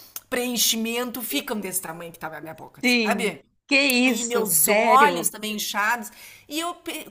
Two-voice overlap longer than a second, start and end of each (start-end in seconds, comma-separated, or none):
4.0-5.3